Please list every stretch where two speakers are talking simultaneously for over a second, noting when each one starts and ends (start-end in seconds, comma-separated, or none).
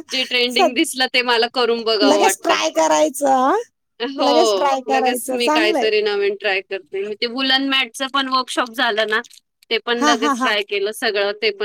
4.3-5.9